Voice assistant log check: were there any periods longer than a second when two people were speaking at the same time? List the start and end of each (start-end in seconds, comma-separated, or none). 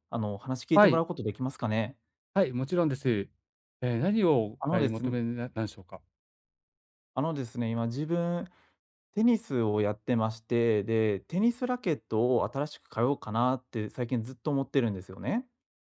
none